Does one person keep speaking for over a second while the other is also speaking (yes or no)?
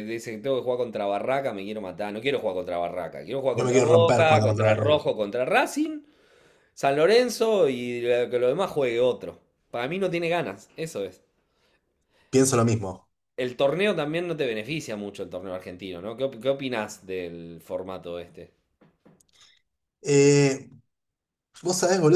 yes